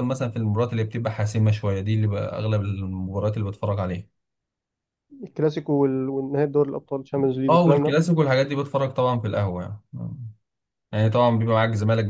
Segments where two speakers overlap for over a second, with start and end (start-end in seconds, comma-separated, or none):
none